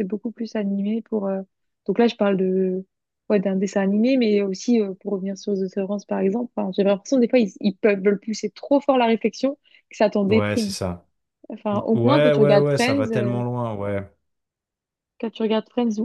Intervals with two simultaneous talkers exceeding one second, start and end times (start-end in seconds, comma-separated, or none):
11.9-13.4